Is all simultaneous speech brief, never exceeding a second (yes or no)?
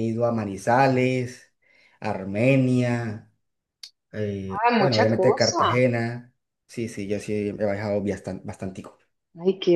no